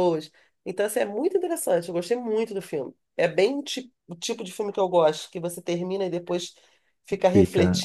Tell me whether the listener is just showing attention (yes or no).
no